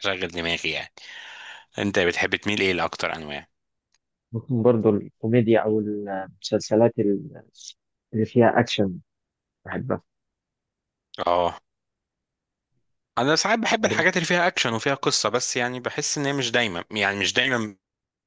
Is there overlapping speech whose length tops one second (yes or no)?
no